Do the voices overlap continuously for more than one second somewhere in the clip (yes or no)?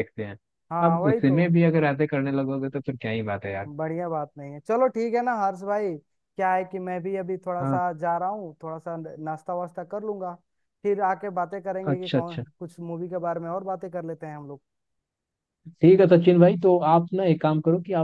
no